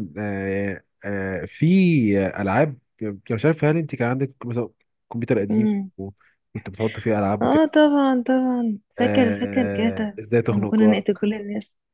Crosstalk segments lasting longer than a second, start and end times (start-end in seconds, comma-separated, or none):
9.0-11.3